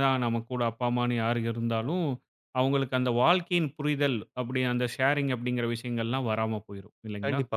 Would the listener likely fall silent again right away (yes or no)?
no